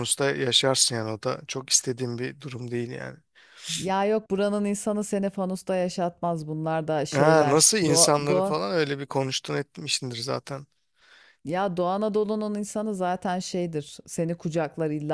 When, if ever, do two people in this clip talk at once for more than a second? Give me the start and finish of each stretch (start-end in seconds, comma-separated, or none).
7.1-8.6